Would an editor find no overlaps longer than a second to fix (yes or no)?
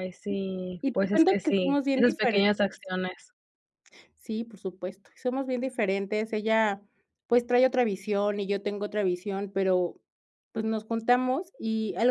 no